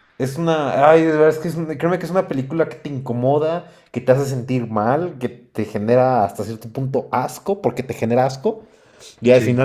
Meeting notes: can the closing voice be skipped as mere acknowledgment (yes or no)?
yes